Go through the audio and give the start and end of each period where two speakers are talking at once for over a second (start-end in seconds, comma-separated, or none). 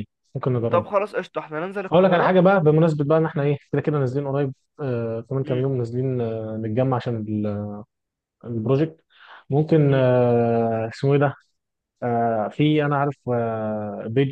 none